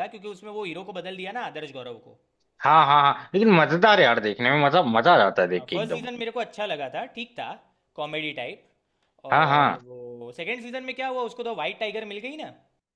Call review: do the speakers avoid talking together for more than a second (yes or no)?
yes